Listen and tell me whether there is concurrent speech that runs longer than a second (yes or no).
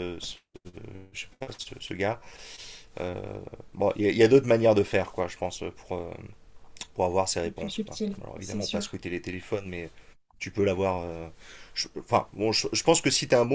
yes